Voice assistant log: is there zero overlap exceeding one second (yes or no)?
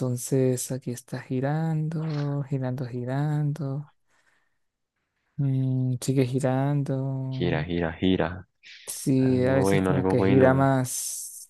no